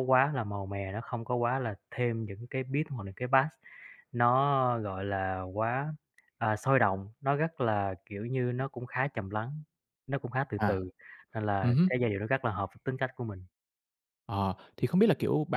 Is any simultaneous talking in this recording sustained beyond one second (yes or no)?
no